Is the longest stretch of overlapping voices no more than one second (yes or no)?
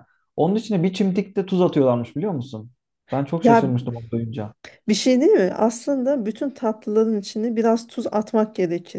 yes